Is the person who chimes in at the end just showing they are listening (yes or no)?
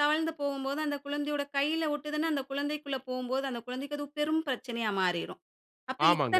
no